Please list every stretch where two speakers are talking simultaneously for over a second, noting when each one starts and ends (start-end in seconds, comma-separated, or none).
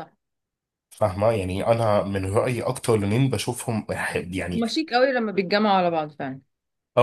none